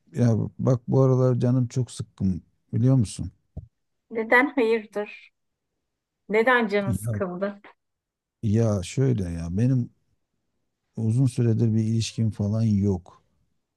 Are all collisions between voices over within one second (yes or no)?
yes